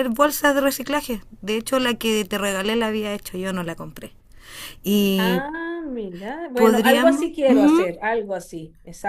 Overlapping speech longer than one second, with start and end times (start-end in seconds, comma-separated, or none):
6.5-7.8